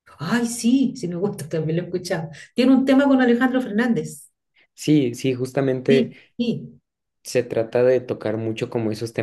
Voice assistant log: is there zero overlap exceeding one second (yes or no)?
yes